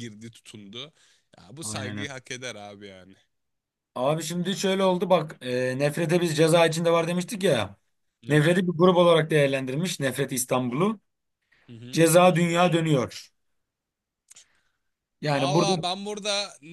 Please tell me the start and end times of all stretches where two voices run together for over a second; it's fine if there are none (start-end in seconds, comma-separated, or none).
none